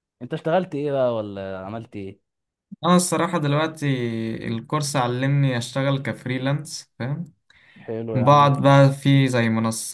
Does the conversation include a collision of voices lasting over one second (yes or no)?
no